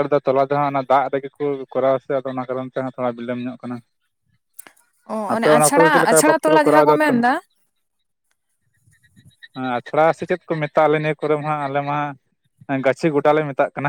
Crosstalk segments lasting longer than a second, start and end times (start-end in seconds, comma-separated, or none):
5.3-7.3